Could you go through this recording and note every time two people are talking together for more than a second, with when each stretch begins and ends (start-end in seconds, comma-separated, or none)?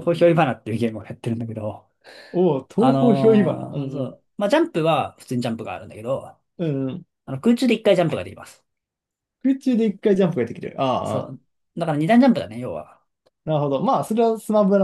2.8-4.2